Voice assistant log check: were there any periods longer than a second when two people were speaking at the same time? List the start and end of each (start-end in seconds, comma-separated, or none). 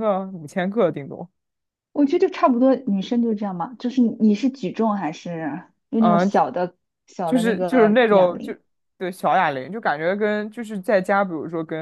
7.2-8.5